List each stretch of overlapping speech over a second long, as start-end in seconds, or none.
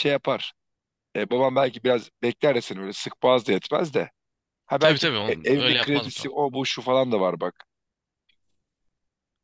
4.8-6.3